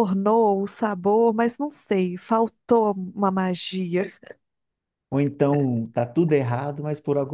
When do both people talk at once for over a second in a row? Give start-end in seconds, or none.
none